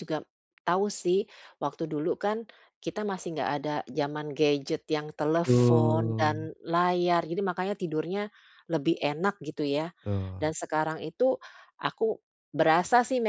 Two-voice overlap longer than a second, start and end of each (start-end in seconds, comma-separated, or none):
5.2-6.5